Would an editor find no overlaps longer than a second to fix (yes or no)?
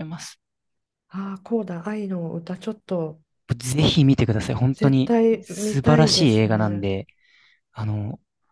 no